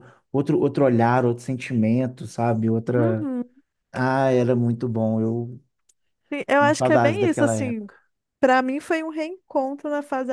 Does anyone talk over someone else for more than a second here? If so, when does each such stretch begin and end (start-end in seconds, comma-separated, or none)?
6.6-7.9